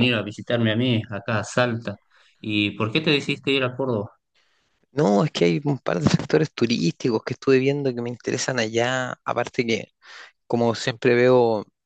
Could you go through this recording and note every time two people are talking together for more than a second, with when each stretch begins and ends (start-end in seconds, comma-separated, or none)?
none